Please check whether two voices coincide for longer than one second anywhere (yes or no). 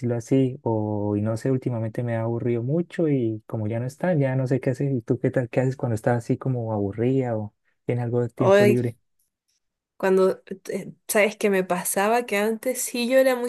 no